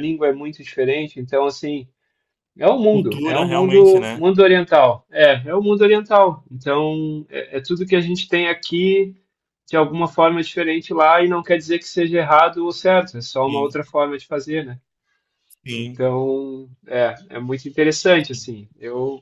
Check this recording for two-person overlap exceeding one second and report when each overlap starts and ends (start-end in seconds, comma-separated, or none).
2.9-4.2